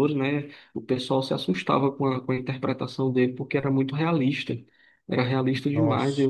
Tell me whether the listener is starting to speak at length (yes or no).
no